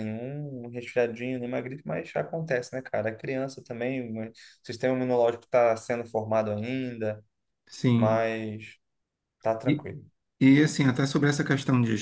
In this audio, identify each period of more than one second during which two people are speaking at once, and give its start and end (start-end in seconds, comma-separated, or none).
none